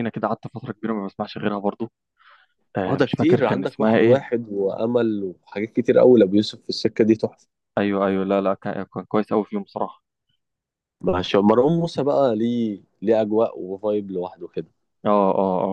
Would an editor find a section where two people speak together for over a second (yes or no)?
yes